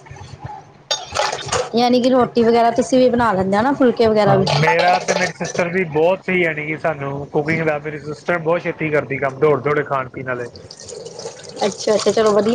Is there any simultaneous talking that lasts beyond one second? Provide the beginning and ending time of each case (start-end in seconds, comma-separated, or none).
none